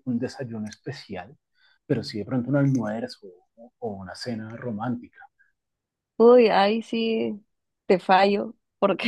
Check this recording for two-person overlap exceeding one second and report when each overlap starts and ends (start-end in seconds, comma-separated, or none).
none